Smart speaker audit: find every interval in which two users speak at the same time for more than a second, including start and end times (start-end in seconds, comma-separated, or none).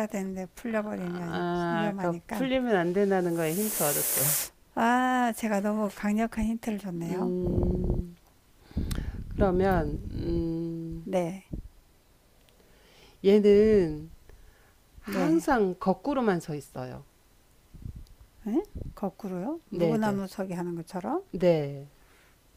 0.7-2.5